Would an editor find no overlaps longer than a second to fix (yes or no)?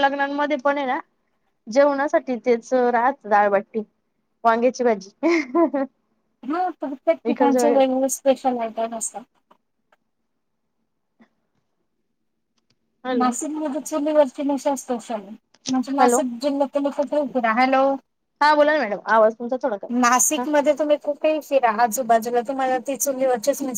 yes